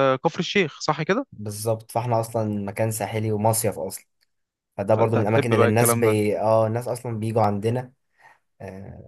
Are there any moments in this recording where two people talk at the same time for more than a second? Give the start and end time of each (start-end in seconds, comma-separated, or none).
4.9-6.1